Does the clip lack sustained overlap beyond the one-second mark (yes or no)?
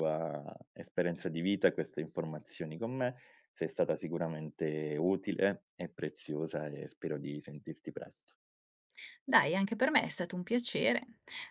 yes